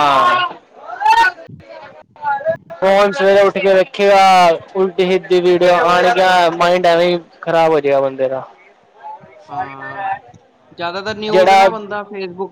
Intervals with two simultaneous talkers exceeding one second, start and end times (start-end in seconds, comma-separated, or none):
none